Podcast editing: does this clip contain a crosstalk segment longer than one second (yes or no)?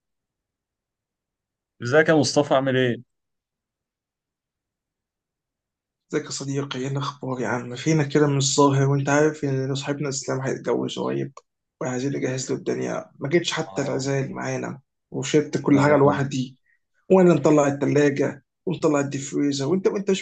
no